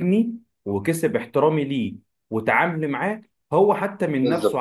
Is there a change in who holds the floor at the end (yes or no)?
no